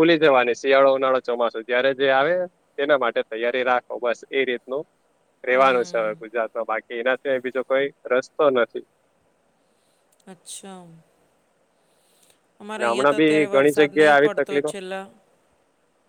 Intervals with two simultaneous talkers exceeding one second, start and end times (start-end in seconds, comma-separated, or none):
12.8-14.7